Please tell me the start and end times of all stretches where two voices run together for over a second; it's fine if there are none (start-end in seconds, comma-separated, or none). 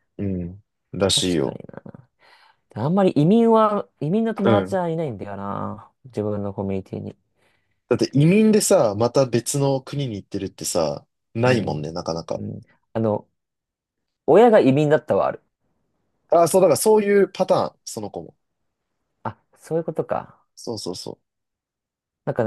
none